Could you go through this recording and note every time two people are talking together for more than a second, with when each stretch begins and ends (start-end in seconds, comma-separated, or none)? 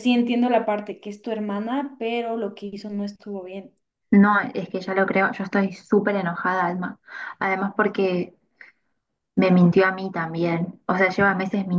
none